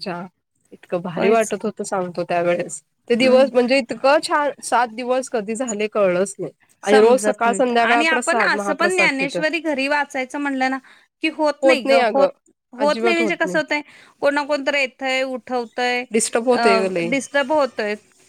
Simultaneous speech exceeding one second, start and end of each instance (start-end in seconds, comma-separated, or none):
6.9-8.7